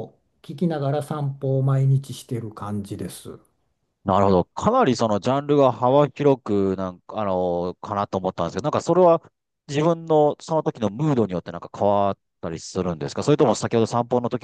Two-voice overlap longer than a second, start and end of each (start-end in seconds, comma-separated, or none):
none